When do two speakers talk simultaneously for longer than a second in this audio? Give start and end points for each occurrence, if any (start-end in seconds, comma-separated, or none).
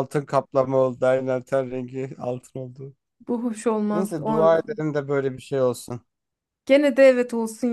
none